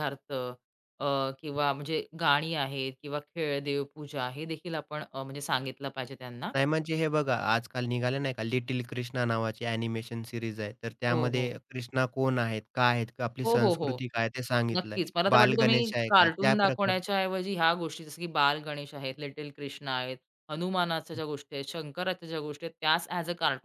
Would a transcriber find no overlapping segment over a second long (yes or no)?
no